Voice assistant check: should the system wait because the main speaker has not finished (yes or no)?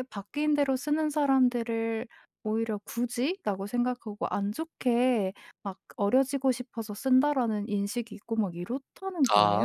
no